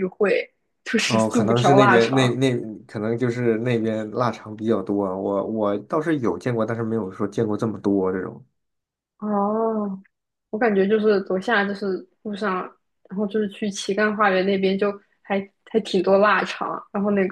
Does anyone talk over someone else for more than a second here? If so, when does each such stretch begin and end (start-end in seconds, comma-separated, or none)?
1.1-2.4